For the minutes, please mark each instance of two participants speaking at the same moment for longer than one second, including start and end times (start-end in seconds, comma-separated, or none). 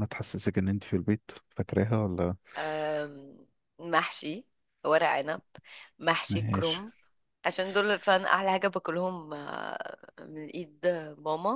none